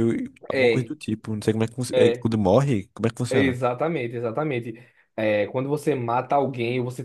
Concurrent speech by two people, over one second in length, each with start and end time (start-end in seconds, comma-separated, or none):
none